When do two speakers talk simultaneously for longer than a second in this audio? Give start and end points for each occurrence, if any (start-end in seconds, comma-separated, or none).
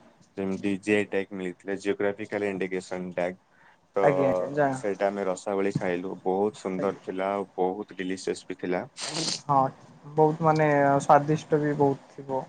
none